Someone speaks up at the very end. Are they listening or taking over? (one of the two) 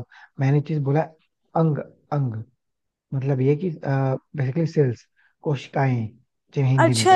taking over